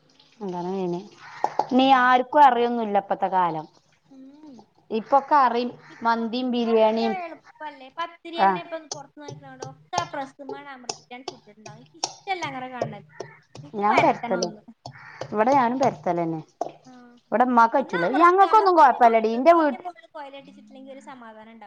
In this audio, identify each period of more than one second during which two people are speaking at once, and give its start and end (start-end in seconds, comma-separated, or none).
17.8-19.8